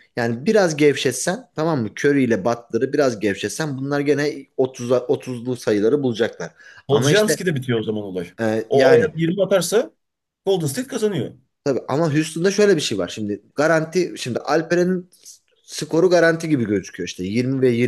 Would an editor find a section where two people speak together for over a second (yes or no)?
no